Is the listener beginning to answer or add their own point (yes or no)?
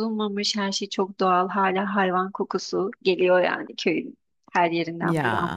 no